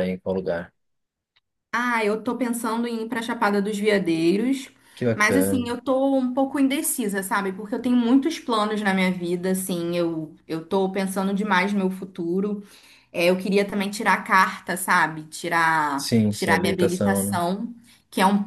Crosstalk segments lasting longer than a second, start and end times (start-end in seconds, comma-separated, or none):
15.9-17.4